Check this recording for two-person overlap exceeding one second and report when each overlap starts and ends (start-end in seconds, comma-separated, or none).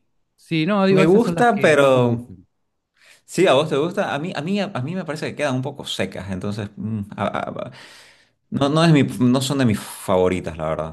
0.9-2.3